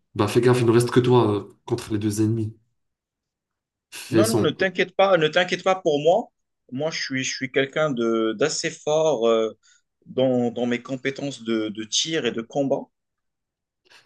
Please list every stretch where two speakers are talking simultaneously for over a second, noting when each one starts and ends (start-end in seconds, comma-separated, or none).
none